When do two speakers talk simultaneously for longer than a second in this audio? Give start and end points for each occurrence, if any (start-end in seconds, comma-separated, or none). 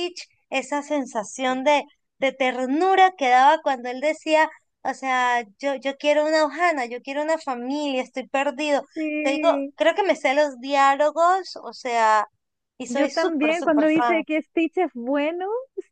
12.9-14.2